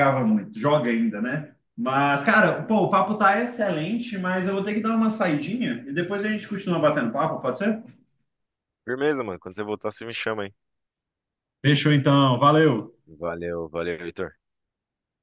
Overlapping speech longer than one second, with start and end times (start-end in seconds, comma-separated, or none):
none